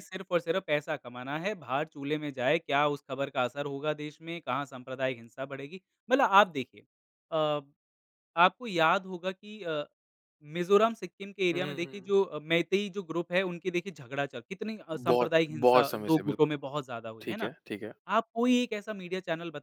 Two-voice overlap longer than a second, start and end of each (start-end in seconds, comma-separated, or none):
14.9-16.5